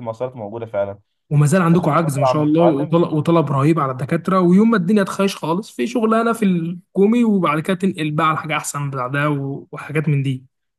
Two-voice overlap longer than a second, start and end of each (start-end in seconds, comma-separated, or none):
1.7-3.0